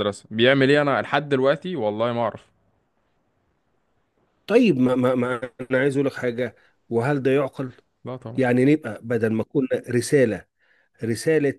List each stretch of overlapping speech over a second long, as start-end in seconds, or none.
none